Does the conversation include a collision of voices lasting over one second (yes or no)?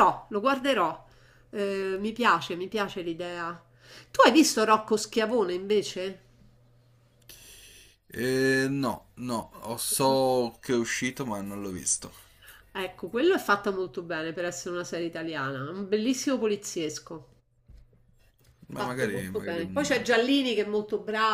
yes